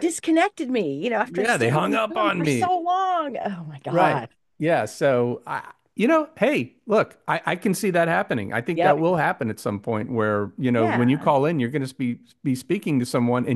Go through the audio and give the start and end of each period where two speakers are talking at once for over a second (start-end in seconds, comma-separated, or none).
1.3-2.7